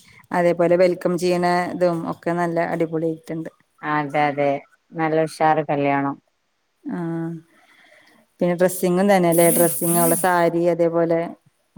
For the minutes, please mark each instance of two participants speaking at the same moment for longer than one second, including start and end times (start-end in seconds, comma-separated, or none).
none